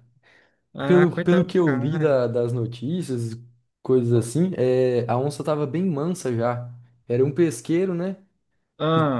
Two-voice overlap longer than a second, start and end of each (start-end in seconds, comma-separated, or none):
0.8-2.1